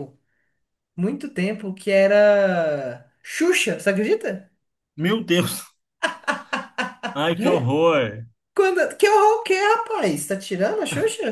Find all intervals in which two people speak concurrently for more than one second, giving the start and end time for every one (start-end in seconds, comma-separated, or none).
none